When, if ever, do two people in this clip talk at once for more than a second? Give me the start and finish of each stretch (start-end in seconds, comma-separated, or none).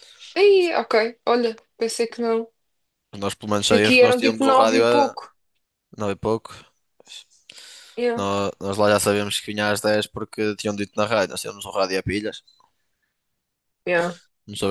3.7-5.2